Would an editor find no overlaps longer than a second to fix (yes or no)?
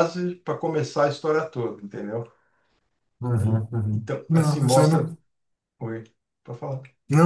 no